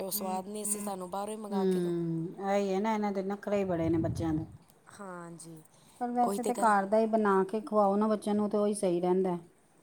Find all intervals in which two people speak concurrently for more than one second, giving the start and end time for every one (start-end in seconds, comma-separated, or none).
none